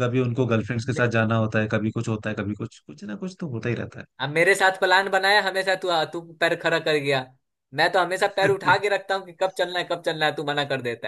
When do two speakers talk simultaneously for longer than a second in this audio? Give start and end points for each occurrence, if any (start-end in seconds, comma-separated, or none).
none